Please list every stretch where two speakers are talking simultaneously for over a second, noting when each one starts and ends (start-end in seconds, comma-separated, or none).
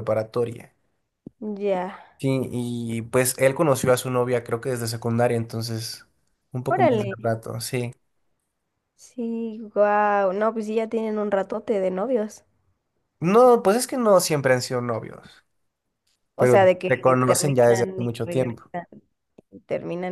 16.4-18.7